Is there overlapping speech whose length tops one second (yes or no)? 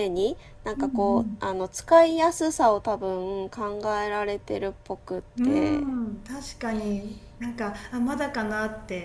no